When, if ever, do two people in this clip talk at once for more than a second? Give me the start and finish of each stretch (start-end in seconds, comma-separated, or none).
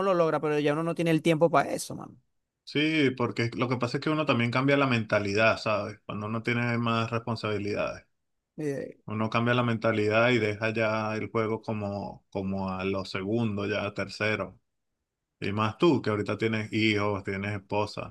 none